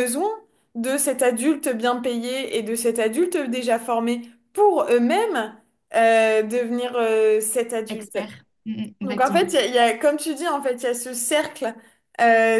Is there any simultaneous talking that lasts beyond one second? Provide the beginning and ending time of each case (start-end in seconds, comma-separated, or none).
none